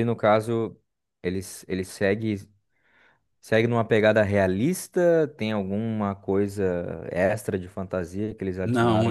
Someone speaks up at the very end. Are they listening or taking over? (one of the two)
taking over